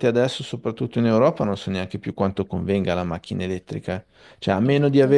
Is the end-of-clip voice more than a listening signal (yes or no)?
no